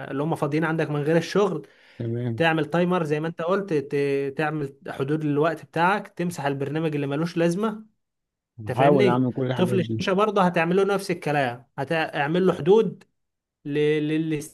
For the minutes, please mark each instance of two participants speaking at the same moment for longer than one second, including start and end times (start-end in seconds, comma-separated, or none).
8.7-10.0